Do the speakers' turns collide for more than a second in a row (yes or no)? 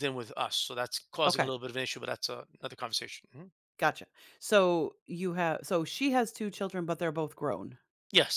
no